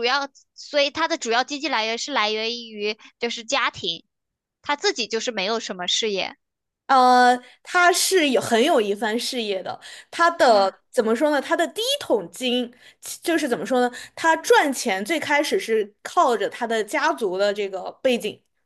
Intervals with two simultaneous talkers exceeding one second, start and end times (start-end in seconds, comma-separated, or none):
none